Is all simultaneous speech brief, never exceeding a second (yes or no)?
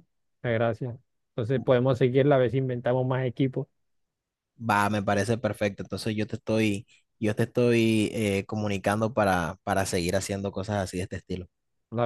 yes